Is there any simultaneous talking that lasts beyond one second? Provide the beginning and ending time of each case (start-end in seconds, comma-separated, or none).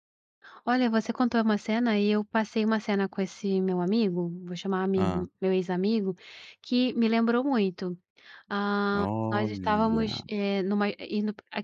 8.9-10.2